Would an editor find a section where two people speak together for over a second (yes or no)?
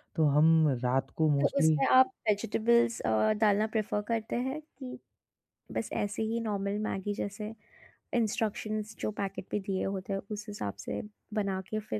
no